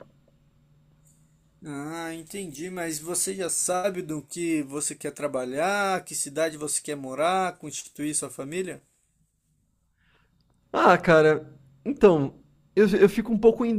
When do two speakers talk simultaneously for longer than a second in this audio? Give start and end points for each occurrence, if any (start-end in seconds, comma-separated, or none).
none